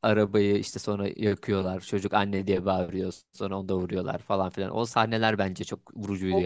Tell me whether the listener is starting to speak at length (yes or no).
yes